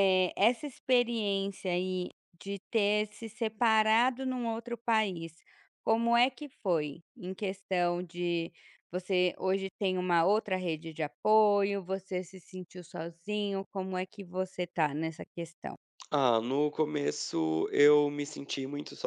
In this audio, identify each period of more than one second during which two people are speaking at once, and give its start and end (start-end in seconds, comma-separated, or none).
none